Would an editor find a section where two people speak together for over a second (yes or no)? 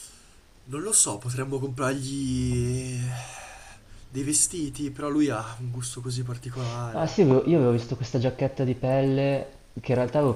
no